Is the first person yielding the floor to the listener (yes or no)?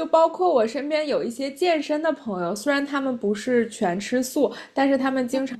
no